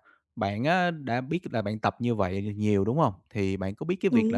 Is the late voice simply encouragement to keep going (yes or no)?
yes